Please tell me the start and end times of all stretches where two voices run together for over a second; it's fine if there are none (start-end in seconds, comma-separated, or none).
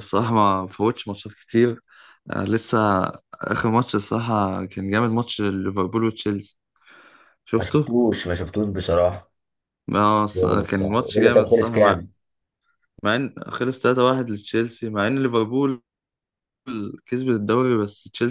10.3-12.0